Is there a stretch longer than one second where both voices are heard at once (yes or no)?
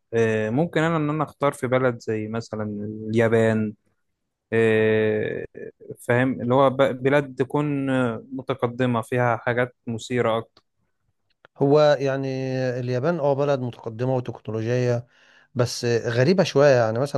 no